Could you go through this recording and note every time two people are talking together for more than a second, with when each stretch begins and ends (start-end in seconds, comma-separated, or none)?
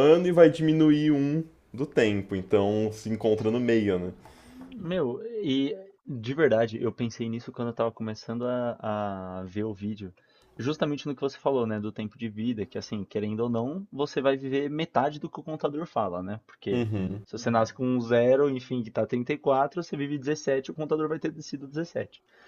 none